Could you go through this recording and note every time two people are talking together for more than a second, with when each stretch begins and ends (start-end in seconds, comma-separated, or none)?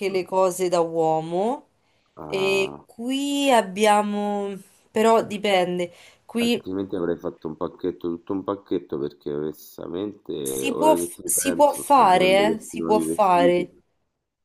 10.4-13.7